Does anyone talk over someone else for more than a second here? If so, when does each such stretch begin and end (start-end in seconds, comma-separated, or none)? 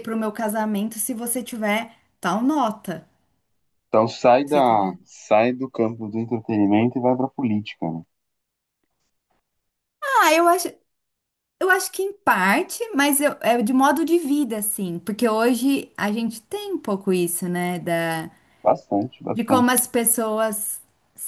none